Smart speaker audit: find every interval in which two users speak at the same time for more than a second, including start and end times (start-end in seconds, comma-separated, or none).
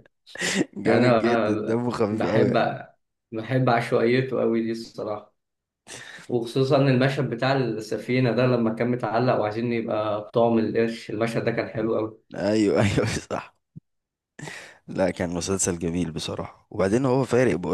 0.8-2.7